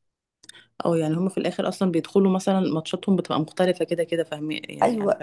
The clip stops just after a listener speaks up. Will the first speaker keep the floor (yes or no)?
no